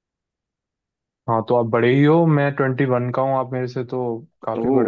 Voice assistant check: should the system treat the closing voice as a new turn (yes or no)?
yes